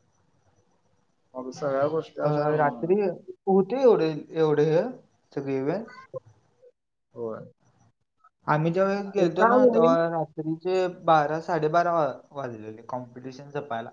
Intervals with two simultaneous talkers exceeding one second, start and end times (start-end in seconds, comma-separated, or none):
none